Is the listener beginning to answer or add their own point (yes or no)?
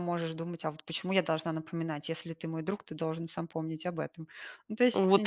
yes